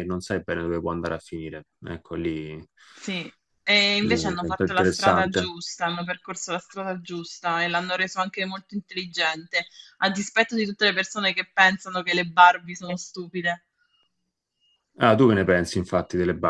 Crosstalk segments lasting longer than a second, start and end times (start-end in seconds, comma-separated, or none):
4.0-5.5